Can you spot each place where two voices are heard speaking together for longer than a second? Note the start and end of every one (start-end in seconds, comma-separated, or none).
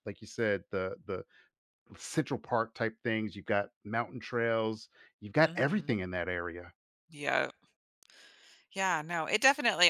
none